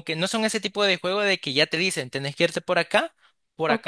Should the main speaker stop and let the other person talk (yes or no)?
yes